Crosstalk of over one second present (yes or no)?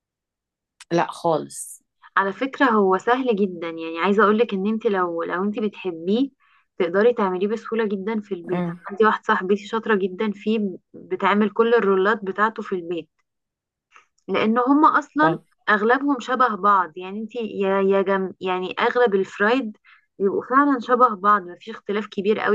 no